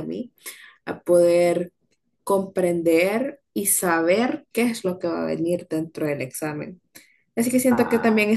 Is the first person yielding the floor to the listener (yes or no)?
no